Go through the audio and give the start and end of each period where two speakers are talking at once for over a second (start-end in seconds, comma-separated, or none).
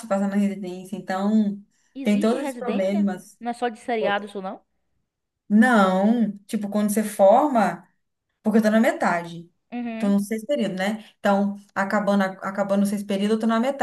2.0-3.4